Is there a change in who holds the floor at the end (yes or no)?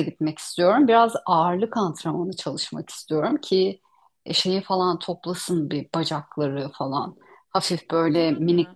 no